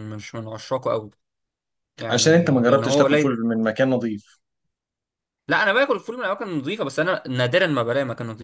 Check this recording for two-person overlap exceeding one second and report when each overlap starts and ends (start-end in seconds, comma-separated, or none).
2.1-3.4